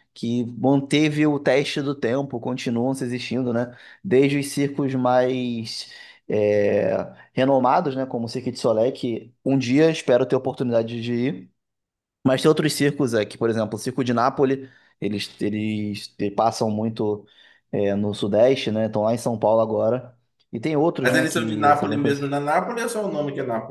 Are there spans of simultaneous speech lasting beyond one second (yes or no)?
yes